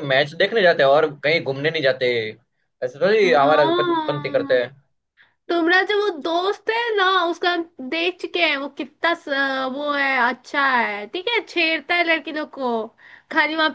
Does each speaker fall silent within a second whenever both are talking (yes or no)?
no